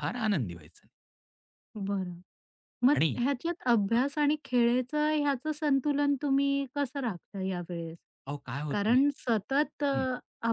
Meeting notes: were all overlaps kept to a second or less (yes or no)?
no